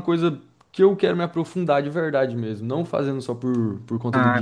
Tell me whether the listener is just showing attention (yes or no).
no